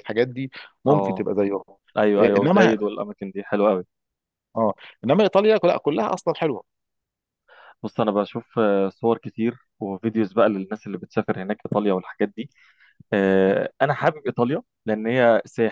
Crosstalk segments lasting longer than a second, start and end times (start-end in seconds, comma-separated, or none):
none